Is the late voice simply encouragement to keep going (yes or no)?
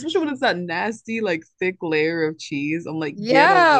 no